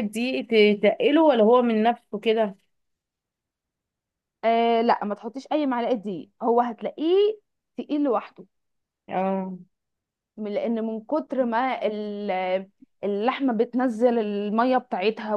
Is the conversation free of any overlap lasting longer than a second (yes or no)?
yes